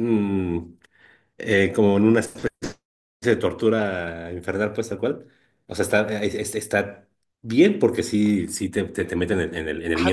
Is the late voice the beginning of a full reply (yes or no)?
yes